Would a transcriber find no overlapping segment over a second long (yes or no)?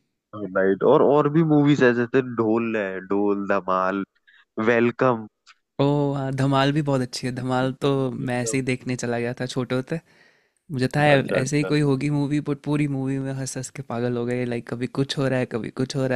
yes